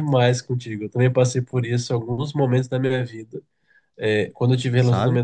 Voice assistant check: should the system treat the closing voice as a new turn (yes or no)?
no